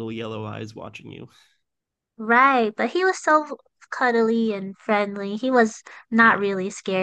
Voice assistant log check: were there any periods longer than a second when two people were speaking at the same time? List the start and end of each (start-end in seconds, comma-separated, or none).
none